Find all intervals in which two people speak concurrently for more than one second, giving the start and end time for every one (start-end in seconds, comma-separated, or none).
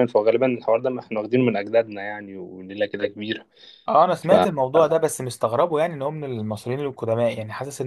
none